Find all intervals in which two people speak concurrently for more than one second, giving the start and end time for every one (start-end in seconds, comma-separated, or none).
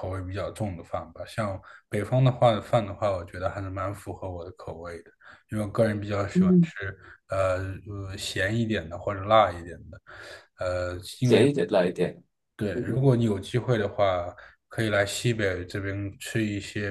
none